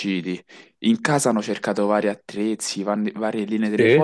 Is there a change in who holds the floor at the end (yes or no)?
no